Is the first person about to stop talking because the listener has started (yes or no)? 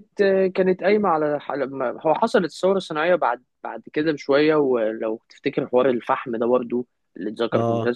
no